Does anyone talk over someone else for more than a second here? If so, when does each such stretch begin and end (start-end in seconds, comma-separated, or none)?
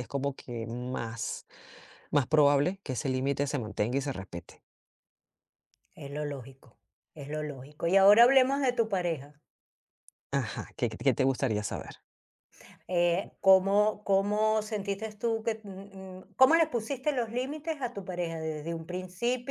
none